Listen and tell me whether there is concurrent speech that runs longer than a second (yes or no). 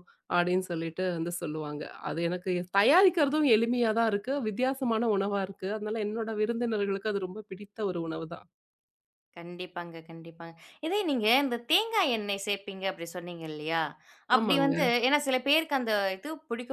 no